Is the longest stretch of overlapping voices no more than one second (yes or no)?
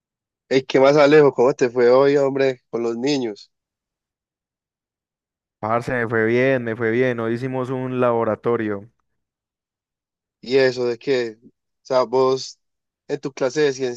yes